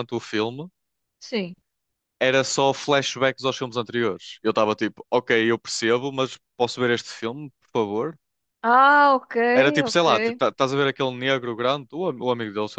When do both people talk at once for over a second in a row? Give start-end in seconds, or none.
none